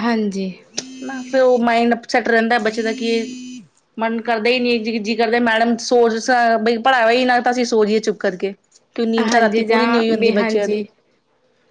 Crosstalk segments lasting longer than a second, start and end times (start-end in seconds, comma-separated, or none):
9.3-10.8